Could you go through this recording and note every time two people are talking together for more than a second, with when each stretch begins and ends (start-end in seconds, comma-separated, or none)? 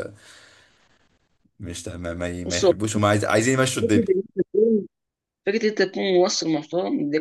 none